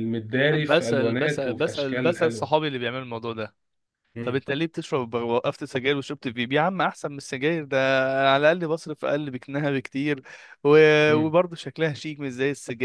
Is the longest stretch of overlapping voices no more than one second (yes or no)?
no